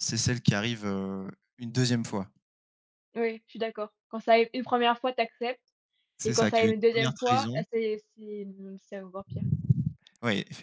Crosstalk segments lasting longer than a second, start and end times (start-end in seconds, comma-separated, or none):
6.2-7.6